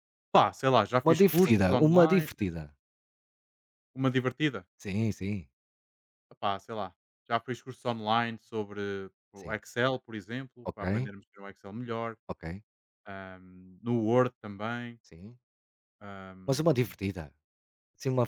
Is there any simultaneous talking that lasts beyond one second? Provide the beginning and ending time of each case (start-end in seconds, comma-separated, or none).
1.0-2.3